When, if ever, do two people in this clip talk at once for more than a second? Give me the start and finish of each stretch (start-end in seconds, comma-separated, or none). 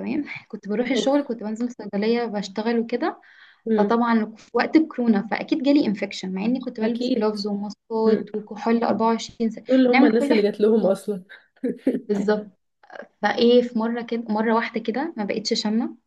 9.7-10.9